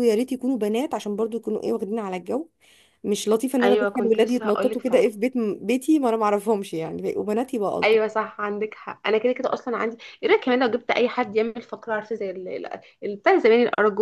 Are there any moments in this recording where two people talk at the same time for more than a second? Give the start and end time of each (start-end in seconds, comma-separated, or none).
3.6-5.1